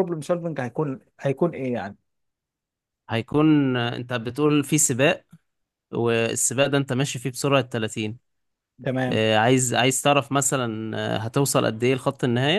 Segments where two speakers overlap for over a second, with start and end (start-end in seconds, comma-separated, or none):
none